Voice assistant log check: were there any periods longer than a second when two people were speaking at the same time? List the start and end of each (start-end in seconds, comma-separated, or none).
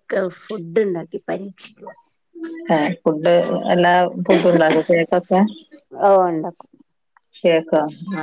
none